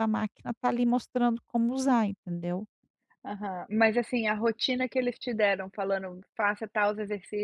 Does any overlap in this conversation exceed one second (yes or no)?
no